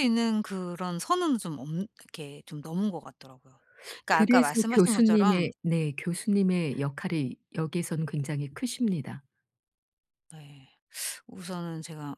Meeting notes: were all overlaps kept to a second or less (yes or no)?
no